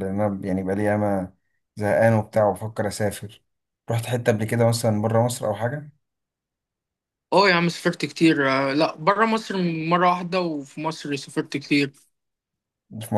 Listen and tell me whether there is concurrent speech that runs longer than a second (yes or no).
no